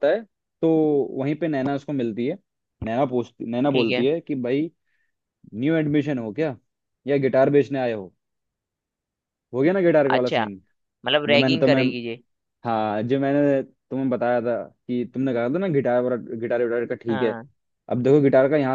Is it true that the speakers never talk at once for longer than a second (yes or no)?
yes